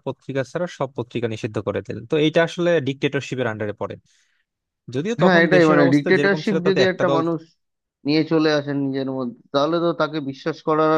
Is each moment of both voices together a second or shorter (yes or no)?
no